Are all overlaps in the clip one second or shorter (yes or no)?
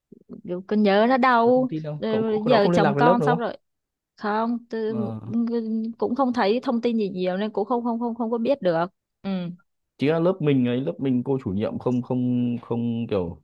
no